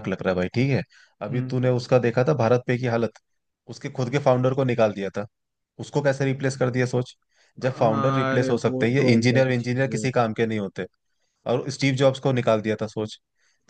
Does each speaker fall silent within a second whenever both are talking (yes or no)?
no